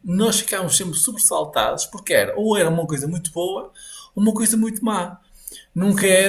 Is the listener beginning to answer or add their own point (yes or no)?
no